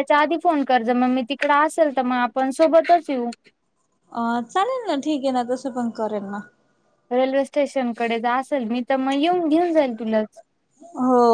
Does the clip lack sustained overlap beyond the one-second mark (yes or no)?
yes